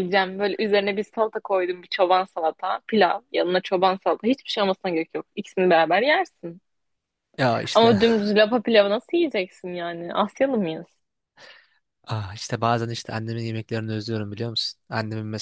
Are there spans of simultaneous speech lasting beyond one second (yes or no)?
no